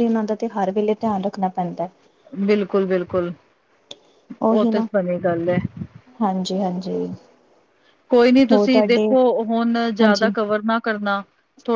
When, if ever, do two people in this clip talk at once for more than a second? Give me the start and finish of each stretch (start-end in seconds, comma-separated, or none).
none